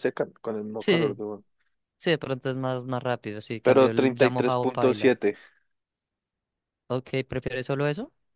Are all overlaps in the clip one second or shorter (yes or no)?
no